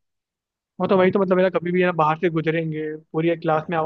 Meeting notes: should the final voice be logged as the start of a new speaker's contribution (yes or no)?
no